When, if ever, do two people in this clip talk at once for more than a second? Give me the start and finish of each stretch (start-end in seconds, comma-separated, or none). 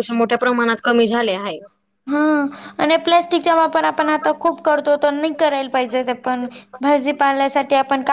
none